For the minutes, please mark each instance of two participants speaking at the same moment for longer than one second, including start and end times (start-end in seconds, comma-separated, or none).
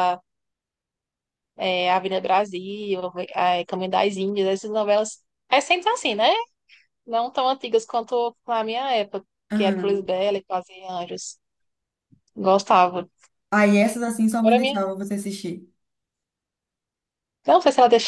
none